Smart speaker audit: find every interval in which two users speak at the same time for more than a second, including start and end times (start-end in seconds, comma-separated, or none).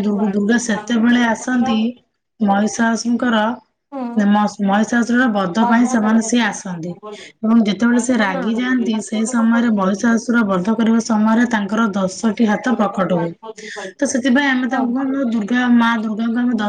5.6-7.3